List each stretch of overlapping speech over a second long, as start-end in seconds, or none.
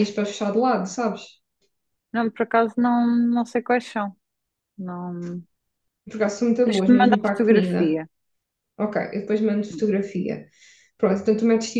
6.6-8.0